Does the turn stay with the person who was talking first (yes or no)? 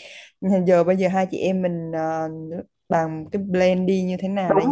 no